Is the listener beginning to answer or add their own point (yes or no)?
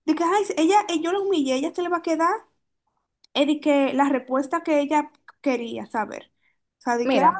no